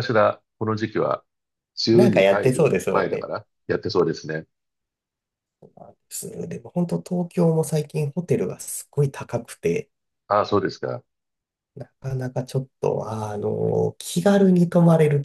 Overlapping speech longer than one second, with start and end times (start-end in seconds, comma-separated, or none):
1.9-3.3